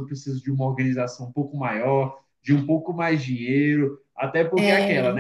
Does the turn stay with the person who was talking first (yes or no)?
yes